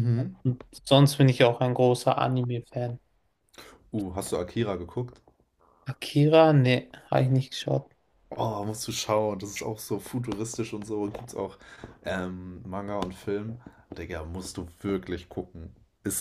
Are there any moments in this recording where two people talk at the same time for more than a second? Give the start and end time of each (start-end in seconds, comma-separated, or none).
none